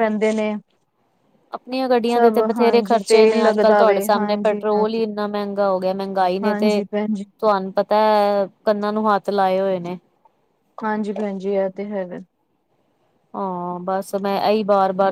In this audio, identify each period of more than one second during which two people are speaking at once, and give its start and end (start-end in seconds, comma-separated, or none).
2.1-5.0